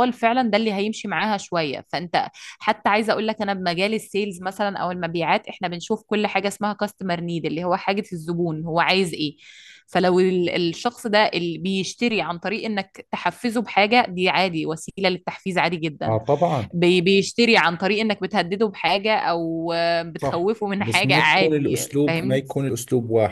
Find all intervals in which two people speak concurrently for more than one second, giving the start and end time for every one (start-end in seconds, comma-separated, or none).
20.2-22.4